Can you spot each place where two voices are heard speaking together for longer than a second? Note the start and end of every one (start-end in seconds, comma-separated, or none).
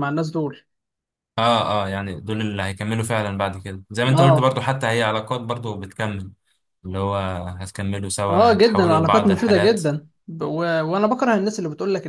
8.3-9.8